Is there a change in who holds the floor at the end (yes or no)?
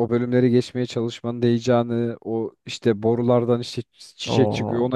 no